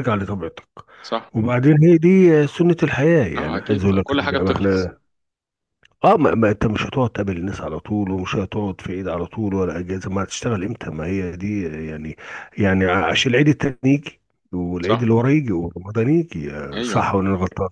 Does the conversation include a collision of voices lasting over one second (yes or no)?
yes